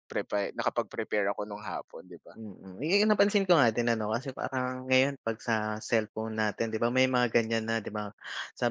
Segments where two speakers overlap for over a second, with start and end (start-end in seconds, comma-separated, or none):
none